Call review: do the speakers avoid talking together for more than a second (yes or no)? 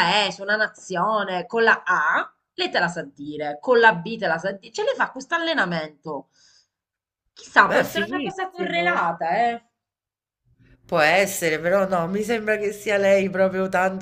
no